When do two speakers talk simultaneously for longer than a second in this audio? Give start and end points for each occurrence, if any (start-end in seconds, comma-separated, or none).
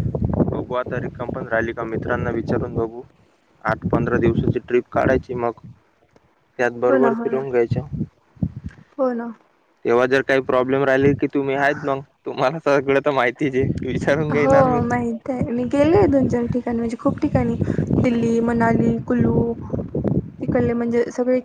none